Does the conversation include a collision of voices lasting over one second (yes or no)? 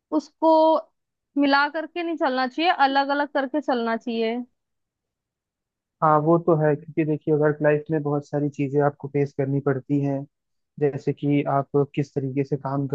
no